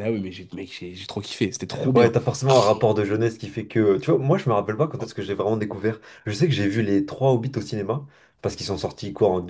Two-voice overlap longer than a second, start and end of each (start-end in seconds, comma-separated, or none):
none